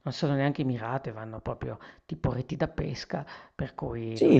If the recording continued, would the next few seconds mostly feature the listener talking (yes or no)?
yes